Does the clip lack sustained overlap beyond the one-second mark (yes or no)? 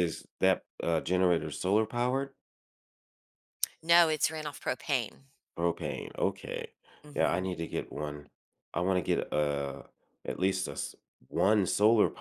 yes